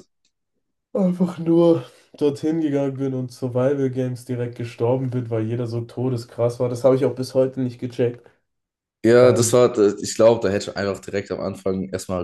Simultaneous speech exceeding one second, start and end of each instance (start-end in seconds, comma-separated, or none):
none